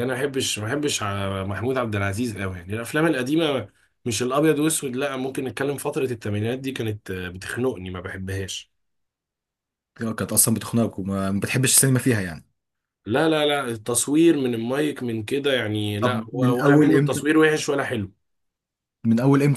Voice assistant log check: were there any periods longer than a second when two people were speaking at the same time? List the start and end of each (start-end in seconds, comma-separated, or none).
16.0-17.3